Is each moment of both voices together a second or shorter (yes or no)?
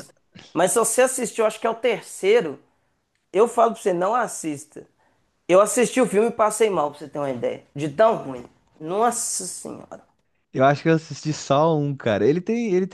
yes